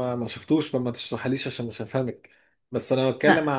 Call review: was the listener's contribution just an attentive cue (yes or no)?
yes